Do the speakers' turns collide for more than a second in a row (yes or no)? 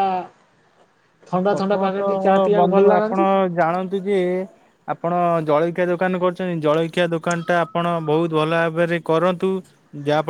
yes